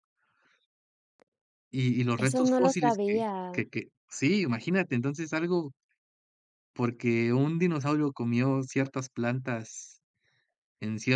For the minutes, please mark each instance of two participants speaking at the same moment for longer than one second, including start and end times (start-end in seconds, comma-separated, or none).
2.2-3.7